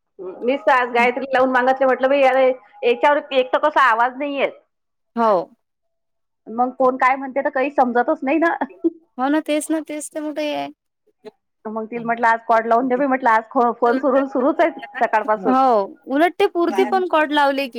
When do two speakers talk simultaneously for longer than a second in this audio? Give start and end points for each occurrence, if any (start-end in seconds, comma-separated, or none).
none